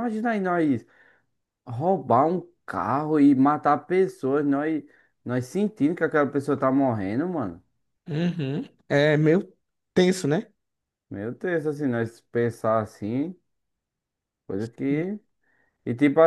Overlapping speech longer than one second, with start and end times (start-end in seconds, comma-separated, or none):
none